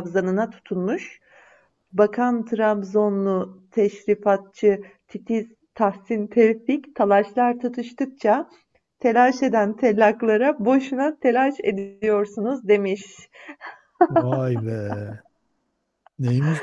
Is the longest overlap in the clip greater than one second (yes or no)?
no